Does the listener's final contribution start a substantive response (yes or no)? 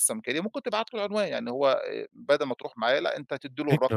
no